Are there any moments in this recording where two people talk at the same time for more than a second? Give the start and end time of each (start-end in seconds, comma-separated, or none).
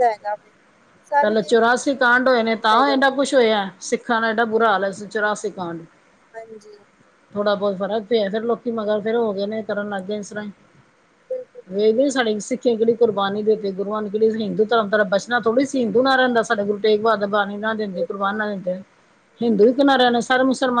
1.2-3.0